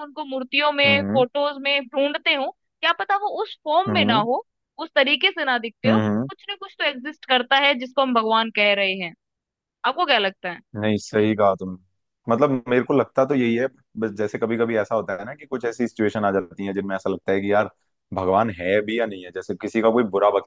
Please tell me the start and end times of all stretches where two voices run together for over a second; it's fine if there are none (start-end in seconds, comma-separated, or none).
none